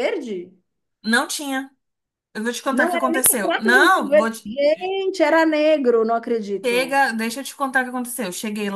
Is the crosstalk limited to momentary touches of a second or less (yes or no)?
no